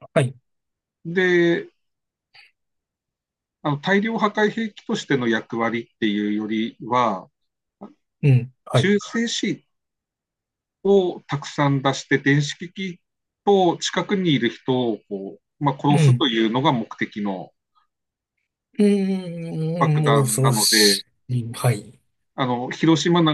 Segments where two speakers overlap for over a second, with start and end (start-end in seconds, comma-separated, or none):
19.8-21.0